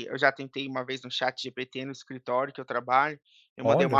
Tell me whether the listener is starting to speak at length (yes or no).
no